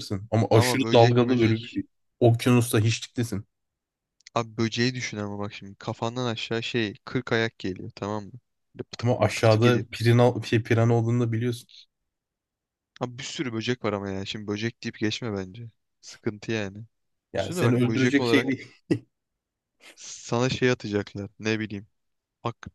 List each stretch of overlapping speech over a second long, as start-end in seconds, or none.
0.5-1.8, 17.4-18.6